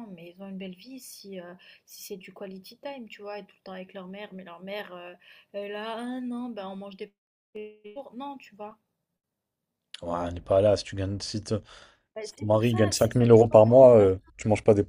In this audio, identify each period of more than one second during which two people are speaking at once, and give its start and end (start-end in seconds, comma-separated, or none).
12.2-14.3